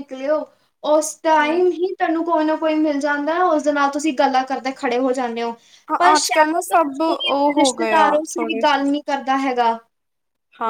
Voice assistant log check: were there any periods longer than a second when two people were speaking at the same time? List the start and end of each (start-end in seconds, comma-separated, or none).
6.2-8.6